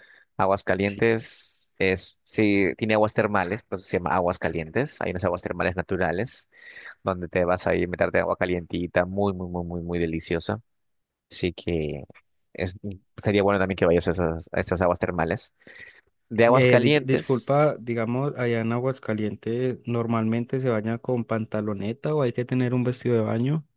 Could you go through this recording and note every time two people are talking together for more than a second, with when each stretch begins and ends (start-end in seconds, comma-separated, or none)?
16.5-17.7